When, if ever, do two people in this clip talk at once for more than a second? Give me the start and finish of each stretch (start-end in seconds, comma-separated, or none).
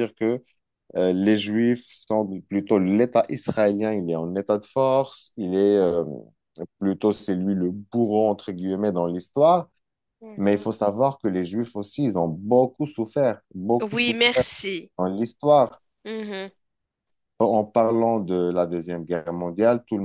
none